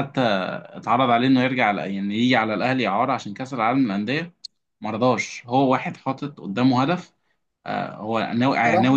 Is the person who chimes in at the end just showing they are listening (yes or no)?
yes